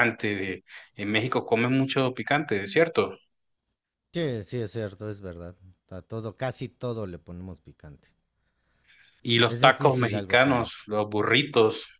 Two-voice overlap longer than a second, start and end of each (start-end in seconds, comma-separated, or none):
9.4-10.7